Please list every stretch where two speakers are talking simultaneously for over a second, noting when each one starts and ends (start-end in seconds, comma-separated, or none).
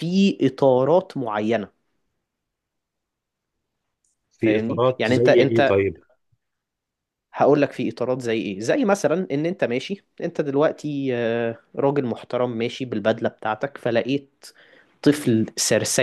4.4-5.8